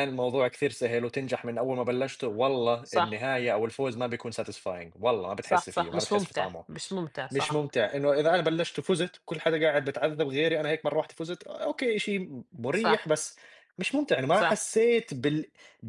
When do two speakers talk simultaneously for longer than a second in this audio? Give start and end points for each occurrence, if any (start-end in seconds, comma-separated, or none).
5.4-6.7